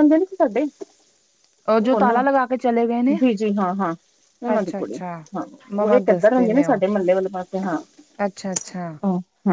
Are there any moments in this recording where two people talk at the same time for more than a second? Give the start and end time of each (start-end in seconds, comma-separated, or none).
none